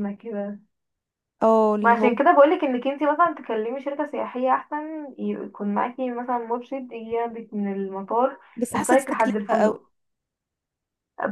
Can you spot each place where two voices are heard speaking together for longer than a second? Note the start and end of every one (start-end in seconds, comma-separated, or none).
8.6-9.8